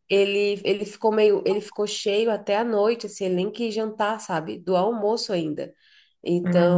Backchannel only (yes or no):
yes